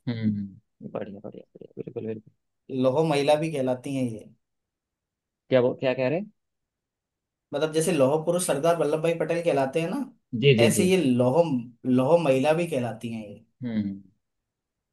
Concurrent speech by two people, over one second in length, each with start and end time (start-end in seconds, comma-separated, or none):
none